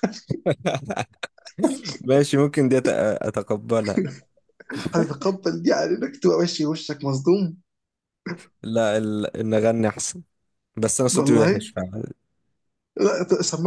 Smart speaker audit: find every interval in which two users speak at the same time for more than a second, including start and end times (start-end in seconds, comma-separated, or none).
none